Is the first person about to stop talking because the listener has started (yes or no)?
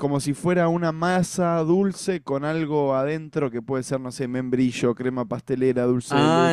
yes